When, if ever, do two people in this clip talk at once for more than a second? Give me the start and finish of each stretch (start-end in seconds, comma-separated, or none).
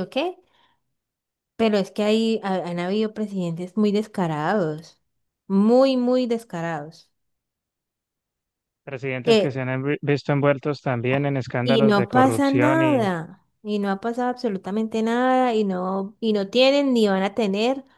11.6-13.1